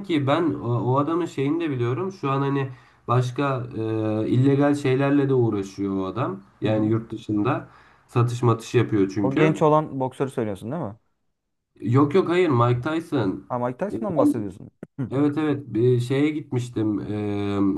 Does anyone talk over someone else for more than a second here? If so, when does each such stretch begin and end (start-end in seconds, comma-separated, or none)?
none